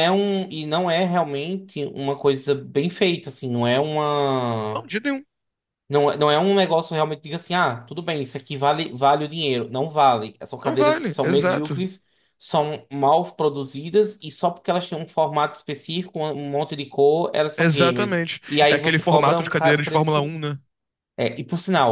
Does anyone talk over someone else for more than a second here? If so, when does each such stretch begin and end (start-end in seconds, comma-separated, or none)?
10.6-11.8, 17.6-20.4